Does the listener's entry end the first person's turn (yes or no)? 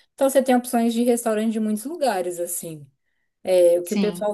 no